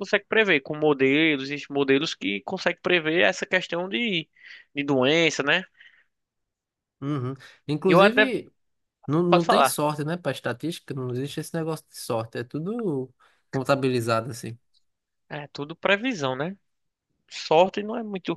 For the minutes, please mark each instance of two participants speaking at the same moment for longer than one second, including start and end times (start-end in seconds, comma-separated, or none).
none